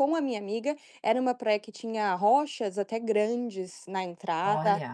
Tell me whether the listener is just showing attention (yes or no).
yes